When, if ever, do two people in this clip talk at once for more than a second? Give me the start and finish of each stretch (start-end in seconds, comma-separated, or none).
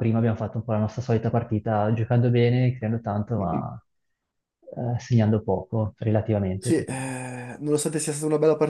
none